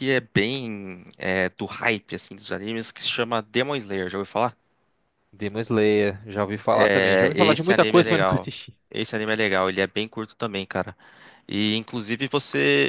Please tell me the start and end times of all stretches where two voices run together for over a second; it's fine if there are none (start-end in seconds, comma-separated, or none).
6.7-8.5